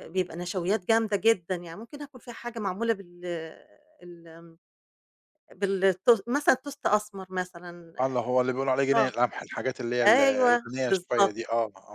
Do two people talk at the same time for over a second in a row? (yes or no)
yes